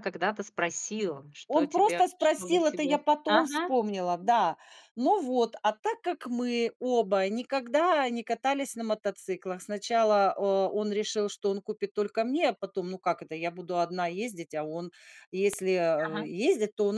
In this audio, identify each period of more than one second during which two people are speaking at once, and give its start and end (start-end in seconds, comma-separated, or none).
1.5-3.8